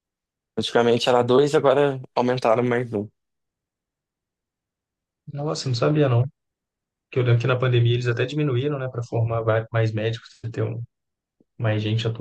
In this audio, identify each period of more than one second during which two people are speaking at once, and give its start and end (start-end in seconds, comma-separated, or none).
none